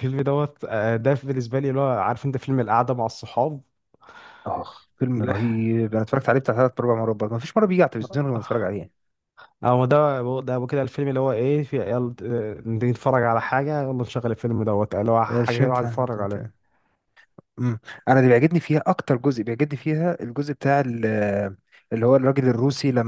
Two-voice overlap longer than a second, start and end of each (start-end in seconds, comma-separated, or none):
15.3-16.5